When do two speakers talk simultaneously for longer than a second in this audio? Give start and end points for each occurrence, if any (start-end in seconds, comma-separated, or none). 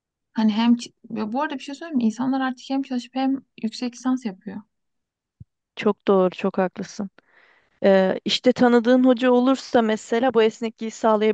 none